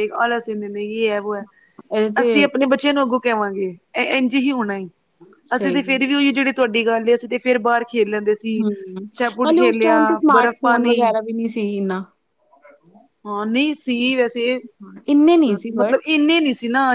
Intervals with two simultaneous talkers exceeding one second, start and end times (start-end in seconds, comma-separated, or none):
9.6-11.1